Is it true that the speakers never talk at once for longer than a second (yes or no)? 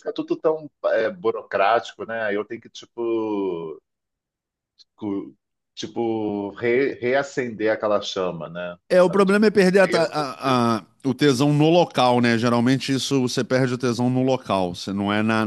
no